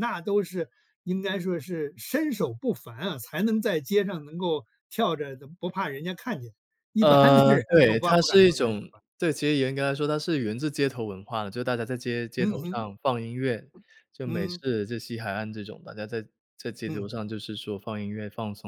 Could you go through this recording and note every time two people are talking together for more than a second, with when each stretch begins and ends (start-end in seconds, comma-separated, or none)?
7.0-9.0